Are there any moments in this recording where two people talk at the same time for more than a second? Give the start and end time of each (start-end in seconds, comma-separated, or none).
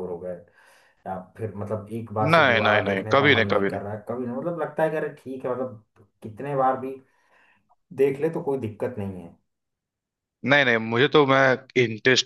2.3-3.8